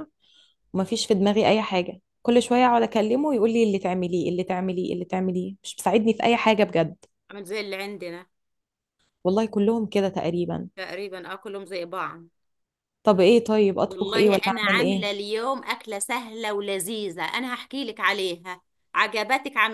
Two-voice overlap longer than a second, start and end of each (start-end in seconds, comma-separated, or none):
13.8-15.2